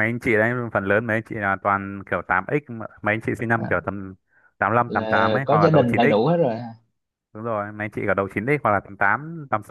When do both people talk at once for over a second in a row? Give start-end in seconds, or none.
4.9-6.2